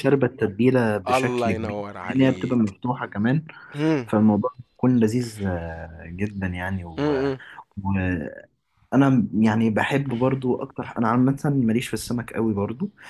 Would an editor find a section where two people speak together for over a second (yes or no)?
yes